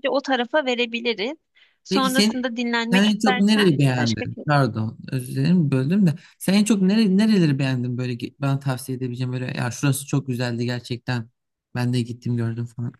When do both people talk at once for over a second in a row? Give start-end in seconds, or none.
2.9-4.4